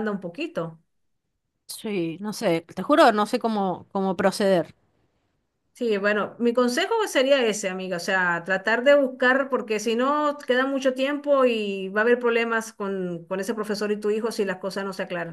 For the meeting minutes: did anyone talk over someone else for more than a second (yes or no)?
no